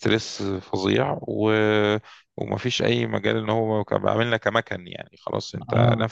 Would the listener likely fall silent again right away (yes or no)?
yes